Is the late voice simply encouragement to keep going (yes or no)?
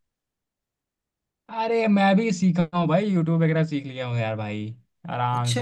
yes